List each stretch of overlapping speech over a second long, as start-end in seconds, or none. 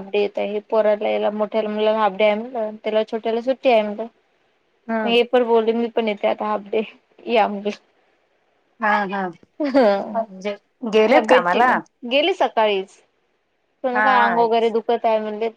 none